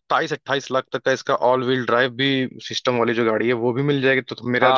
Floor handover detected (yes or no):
yes